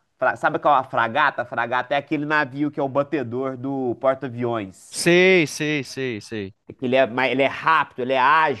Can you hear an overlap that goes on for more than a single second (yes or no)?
no